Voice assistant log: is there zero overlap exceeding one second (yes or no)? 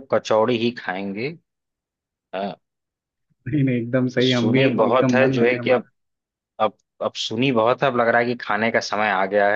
no